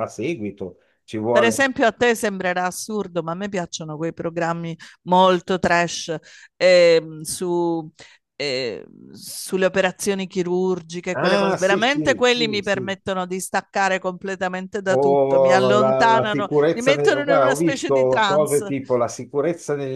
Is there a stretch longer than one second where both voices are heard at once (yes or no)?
yes